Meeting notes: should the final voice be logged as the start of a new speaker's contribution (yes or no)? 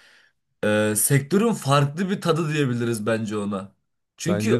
no